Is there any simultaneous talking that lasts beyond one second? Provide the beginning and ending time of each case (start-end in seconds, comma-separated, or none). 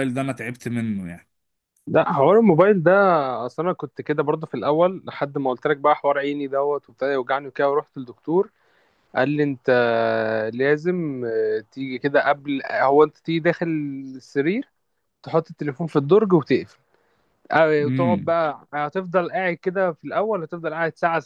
none